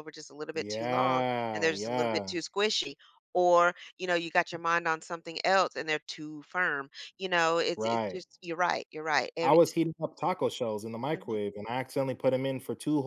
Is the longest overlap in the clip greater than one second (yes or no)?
yes